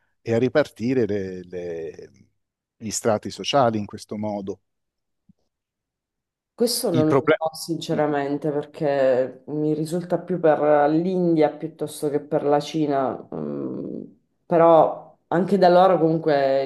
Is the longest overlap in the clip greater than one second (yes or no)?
no